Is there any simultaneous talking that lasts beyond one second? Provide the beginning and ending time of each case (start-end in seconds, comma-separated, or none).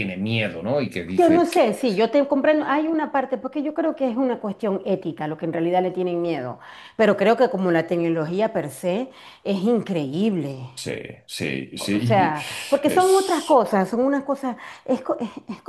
11.9-13.6